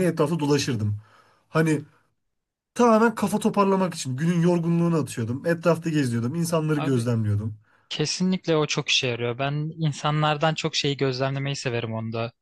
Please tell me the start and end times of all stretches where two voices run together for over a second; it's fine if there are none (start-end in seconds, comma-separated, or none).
none